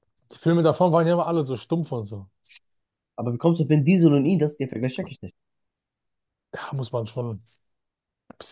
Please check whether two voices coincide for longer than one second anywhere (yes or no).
no